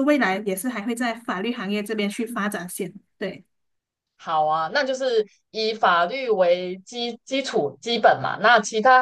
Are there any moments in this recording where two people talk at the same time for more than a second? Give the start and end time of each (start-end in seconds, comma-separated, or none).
none